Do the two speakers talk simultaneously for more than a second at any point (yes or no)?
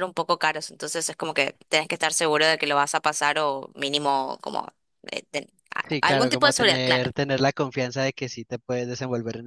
yes